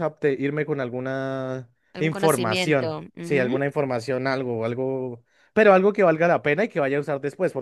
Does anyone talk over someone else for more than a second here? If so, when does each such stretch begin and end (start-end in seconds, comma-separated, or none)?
1.9-3.6